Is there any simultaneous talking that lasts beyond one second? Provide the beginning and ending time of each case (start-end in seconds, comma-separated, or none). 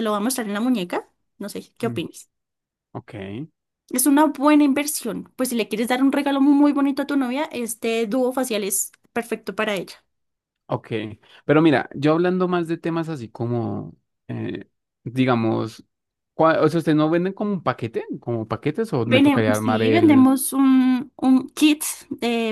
19.1-20.3